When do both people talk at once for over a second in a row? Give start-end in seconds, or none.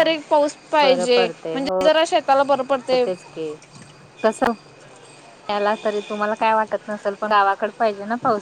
none